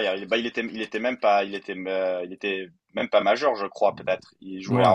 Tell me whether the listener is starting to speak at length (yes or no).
yes